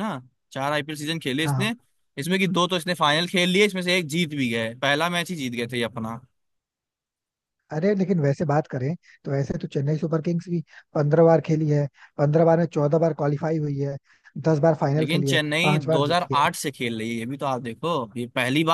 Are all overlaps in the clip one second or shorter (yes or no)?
no